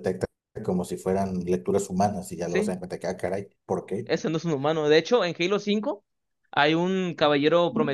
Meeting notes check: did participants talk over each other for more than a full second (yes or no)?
no